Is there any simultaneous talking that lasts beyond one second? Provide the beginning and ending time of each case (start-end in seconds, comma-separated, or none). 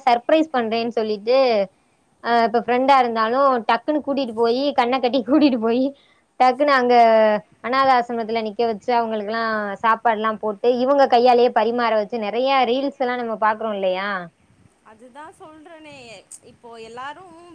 none